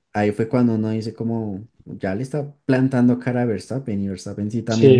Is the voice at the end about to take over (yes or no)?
yes